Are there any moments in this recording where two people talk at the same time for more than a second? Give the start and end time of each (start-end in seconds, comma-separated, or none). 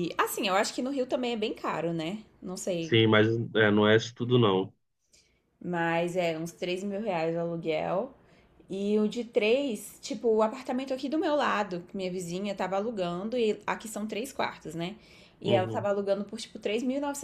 none